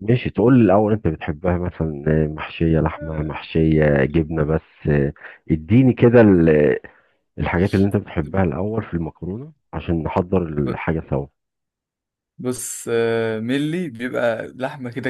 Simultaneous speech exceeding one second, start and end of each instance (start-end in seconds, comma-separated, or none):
none